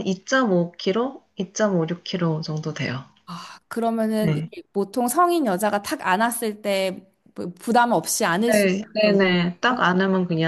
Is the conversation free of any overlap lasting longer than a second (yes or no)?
no